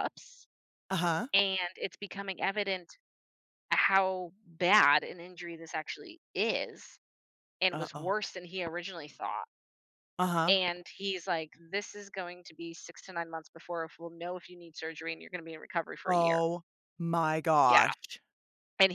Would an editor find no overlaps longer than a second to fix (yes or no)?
yes